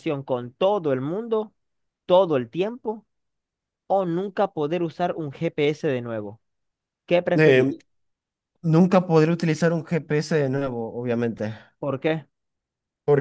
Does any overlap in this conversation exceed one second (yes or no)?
no